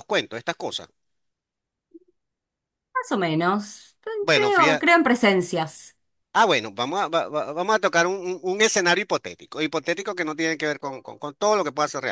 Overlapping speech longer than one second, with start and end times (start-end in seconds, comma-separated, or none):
none